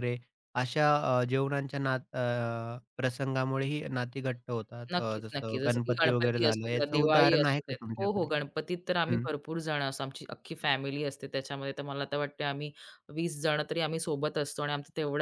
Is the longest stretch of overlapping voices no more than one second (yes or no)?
no